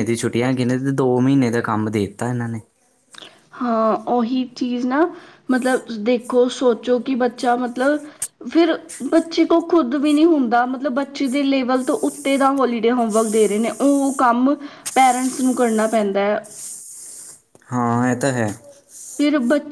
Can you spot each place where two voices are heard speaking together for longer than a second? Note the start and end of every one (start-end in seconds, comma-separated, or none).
none